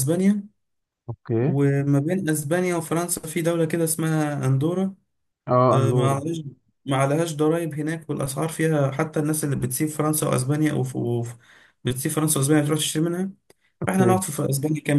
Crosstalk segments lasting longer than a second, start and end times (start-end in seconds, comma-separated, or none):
none